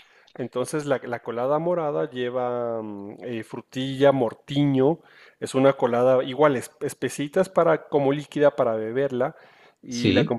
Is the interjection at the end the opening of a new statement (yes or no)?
no